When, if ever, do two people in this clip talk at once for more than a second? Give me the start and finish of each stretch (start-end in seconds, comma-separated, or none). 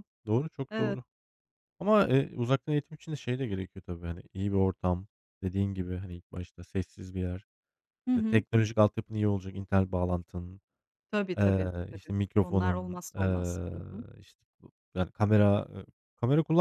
11.4-13.7